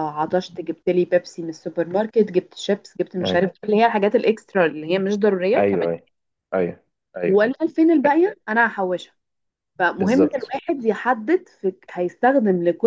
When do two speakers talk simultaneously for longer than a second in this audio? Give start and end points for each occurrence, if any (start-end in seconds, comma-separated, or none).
none